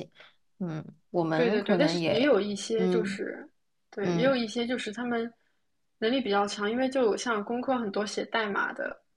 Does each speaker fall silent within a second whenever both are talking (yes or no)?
no